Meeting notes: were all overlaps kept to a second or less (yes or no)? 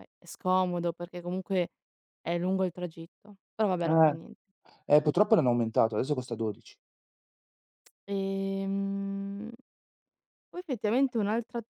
yes